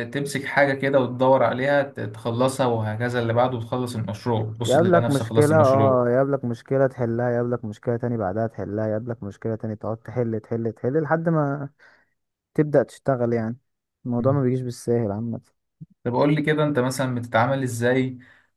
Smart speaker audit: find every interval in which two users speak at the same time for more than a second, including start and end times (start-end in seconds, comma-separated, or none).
4.7-6.0